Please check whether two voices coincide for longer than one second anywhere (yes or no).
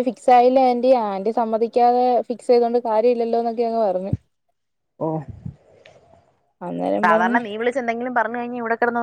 no